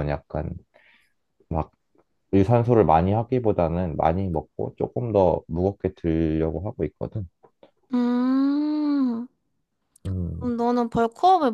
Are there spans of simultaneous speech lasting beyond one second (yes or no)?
no